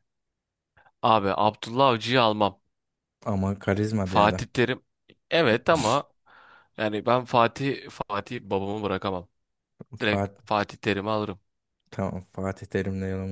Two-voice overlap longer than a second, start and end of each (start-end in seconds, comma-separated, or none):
none